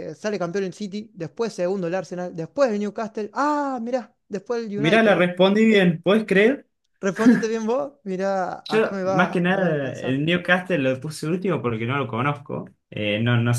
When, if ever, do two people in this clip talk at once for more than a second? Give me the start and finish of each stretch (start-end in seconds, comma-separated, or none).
8.7-10.2